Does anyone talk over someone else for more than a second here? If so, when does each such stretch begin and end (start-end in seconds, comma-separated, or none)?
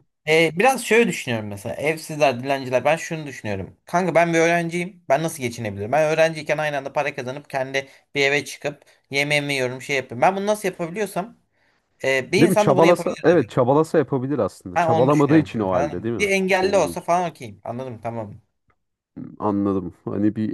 12.4-13.6, 14.8-17.1